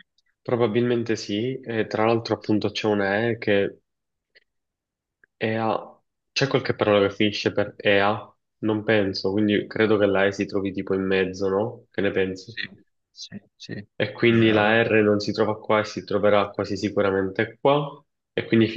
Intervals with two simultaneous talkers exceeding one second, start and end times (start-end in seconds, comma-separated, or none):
none